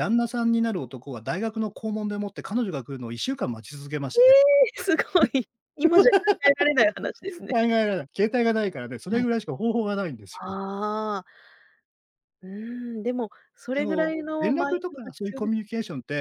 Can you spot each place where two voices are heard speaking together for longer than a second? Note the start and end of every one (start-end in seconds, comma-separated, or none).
13.7-15.5